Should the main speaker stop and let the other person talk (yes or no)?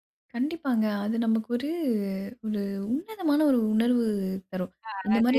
yes